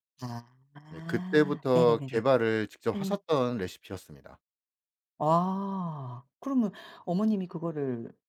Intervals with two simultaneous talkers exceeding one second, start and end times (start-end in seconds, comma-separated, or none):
0.9-2.2